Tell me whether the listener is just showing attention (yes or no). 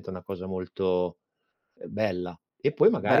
yes